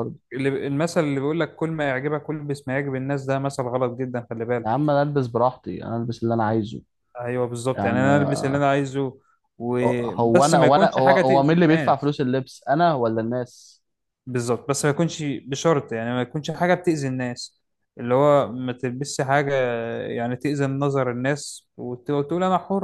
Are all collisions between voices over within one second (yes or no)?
no